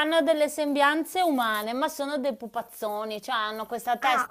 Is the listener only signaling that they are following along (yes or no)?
yes